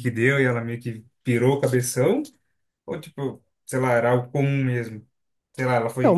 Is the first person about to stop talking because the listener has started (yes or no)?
yes